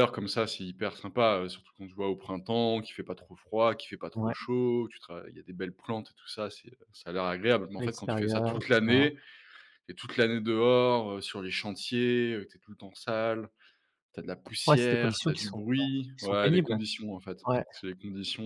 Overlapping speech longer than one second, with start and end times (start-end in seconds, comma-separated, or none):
7.8-9.1, 14.7-16.7